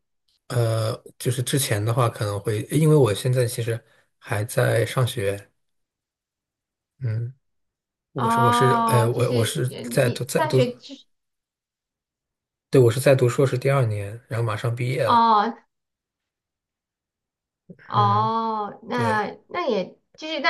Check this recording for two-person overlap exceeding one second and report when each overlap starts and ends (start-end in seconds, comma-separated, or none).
8.2-10.6